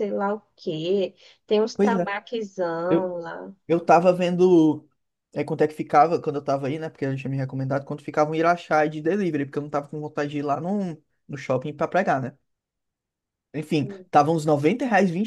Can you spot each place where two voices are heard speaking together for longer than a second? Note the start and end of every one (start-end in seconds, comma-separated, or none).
none